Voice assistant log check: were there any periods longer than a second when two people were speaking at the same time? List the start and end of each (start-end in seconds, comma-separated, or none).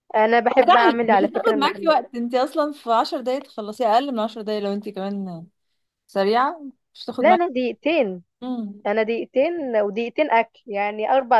0.7-2.0